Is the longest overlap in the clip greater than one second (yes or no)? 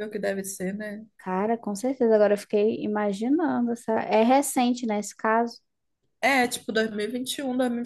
no